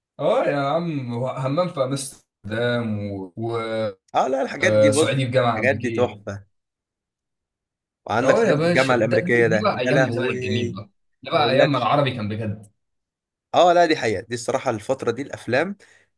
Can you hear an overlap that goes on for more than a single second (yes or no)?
yes